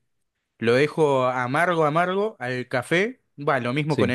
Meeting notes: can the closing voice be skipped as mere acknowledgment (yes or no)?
yes